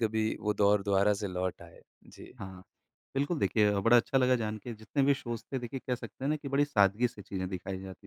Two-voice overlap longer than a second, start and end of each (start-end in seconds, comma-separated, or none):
none